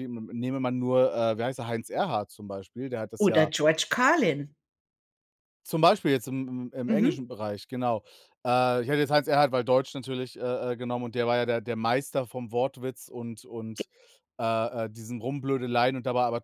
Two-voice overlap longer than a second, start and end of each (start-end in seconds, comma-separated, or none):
none